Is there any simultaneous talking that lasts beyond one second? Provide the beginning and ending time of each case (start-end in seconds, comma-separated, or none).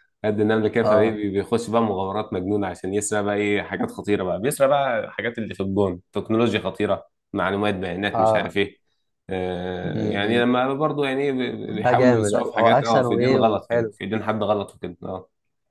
11.7-13.9